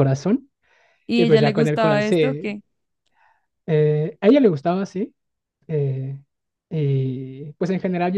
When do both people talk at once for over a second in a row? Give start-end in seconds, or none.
1.1-2.5